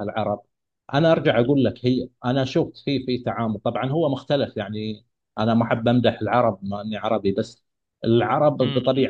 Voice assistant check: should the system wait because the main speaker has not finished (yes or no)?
yes